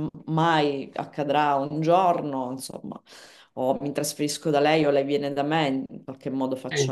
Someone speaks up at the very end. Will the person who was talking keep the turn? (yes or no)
no